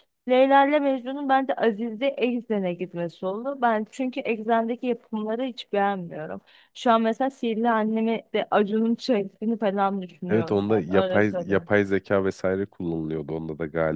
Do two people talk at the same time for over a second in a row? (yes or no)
yes